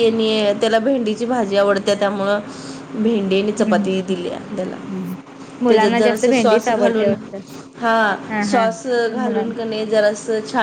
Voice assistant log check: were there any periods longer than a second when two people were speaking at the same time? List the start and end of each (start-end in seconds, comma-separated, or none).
5.7-7.1